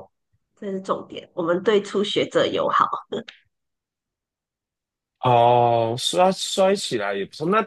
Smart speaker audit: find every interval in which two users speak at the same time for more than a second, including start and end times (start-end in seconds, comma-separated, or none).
none